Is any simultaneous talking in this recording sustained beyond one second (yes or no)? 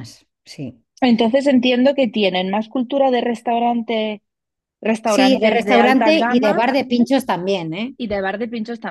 yes